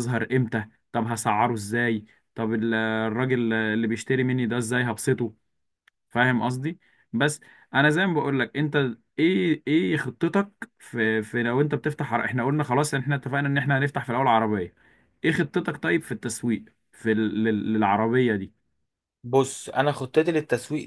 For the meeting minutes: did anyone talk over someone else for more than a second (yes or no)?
no